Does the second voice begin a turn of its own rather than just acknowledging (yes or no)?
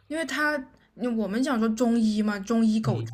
no